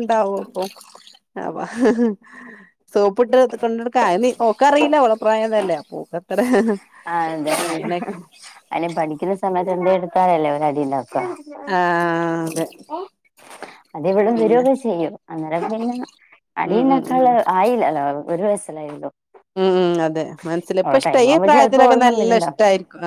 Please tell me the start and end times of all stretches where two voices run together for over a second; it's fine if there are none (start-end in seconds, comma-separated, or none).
20.8-22.6